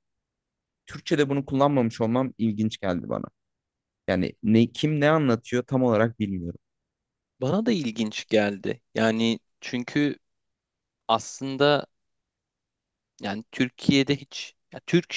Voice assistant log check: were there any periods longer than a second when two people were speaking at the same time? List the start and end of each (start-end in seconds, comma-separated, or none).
none